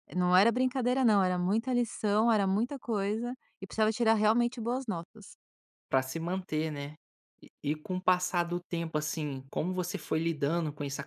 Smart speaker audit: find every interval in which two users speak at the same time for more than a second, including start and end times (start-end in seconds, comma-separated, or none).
none